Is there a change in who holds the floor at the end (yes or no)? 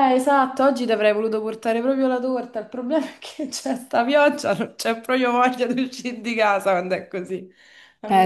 yes